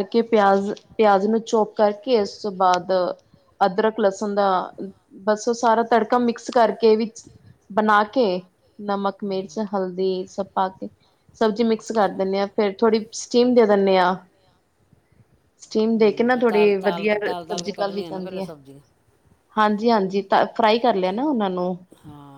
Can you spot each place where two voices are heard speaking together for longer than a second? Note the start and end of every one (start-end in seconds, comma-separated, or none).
15.9-18.5